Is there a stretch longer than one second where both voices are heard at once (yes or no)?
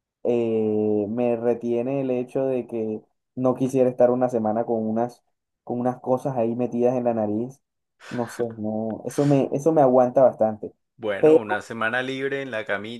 no